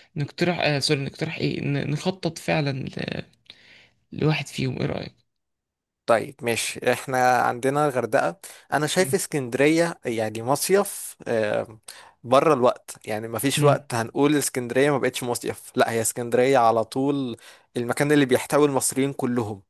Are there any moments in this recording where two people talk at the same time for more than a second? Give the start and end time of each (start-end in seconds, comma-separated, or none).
none